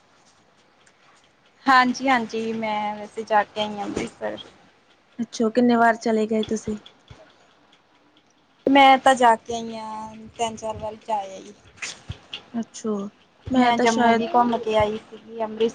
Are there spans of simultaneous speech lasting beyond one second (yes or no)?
no